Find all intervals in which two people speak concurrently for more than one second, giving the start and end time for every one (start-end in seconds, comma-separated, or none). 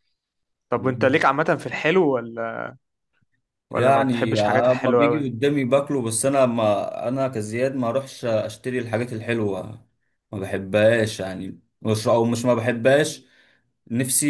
3.7-5.3